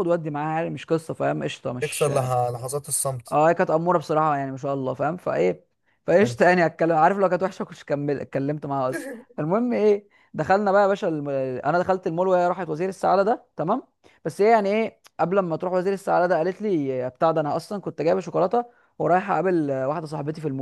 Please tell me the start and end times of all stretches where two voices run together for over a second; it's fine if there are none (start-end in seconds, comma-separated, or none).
none